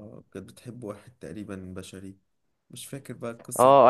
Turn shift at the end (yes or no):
yes